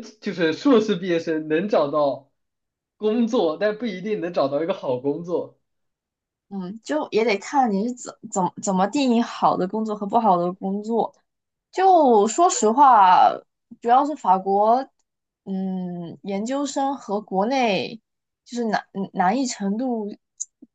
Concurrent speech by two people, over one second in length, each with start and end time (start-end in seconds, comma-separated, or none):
none